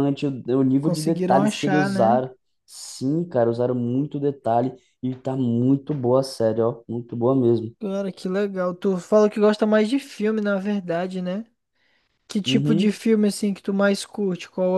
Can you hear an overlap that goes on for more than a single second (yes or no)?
yes